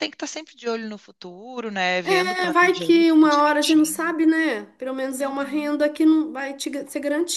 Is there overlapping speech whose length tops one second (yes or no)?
yes